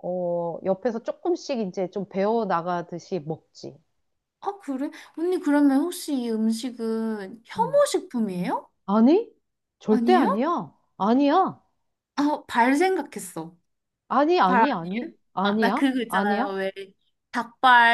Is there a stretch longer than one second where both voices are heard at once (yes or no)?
yes